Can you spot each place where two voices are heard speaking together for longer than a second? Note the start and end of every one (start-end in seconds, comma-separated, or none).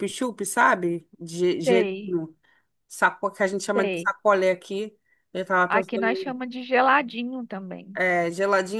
none